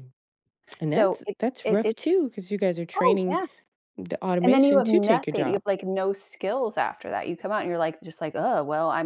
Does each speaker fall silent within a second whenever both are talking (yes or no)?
no